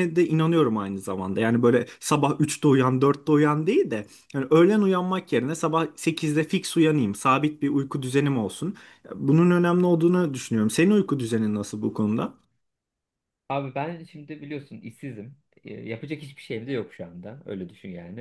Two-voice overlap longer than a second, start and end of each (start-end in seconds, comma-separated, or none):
none